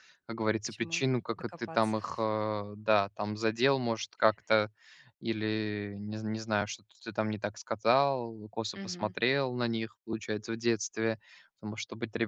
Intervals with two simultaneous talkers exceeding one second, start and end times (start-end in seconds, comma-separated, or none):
0.6-2.0